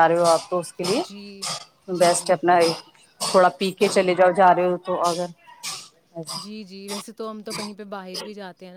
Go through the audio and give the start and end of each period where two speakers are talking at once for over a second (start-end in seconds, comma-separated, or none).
none